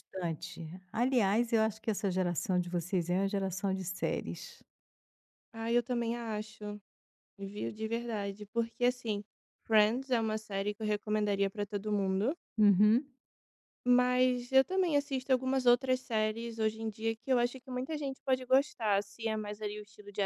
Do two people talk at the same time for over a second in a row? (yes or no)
no